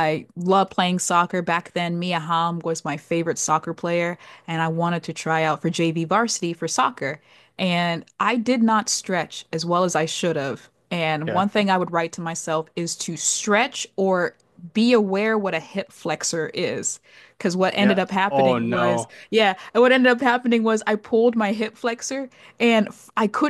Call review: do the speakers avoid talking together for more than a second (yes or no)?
no